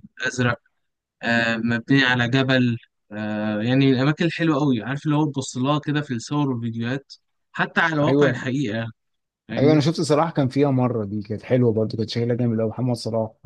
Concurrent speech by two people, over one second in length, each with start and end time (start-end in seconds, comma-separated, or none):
none